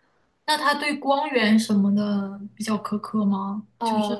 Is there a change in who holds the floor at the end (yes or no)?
yes